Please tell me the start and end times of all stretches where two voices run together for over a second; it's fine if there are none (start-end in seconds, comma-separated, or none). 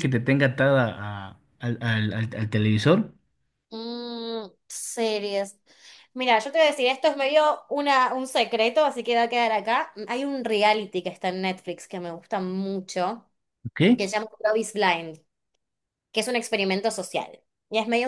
none